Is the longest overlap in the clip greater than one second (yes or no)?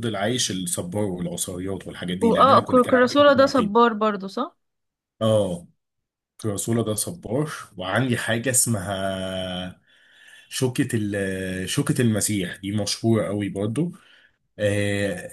yes